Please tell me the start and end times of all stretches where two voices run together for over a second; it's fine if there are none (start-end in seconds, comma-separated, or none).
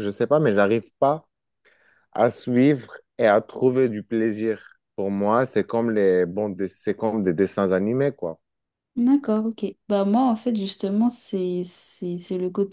none